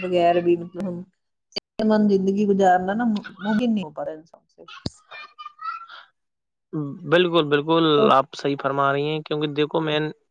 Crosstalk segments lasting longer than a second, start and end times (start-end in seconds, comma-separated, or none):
none